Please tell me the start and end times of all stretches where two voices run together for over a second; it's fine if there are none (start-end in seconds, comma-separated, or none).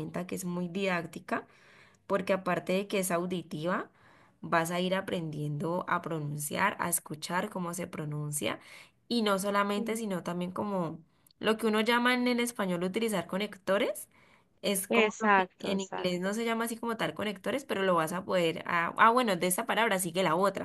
14.9-16.4